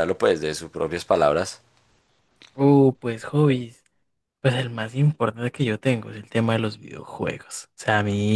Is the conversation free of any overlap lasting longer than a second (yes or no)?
yes